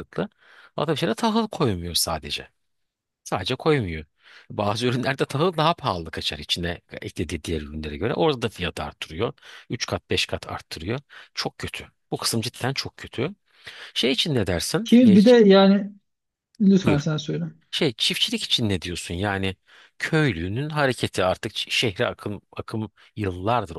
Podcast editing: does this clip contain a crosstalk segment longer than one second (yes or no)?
no